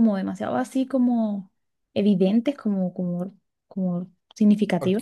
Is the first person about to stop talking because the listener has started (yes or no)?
yes